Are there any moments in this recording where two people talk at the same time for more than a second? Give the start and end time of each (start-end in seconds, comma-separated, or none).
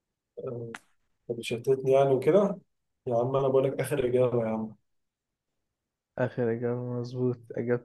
none